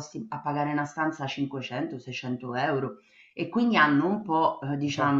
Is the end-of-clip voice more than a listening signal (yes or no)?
no